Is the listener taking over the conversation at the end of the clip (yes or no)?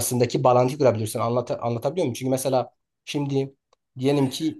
no